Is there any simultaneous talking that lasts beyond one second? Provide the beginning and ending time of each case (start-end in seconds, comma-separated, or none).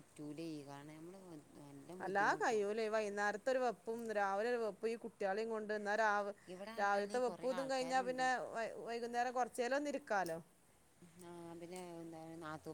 6.8-8.2